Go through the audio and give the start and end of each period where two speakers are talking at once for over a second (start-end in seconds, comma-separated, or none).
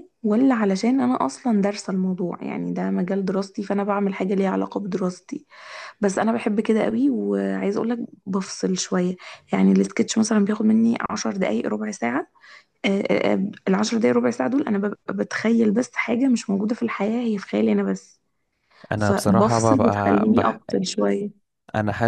19.0-20.6